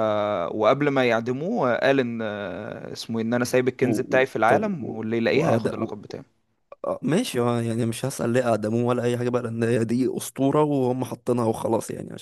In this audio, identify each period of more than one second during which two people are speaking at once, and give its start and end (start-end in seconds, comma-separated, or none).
4.5-6.0